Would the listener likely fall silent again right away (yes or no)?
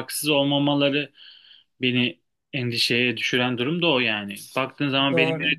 yes